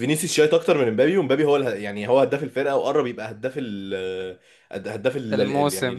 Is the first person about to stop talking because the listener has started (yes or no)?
no